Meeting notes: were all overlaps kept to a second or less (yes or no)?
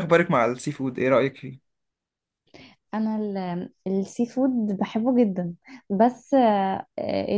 yes